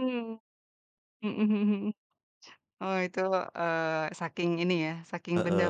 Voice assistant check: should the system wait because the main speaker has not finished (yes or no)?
no